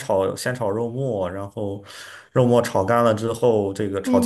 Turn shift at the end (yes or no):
yes